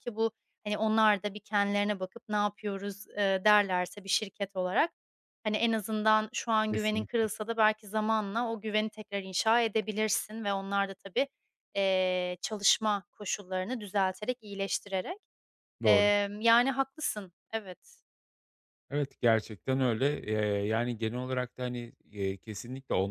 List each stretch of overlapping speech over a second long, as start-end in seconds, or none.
none